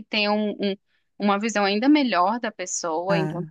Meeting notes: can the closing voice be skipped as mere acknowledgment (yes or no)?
yes